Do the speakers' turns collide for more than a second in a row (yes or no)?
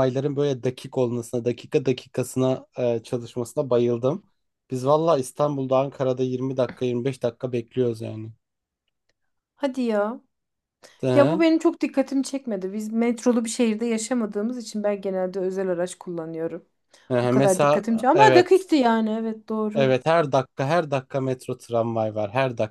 yes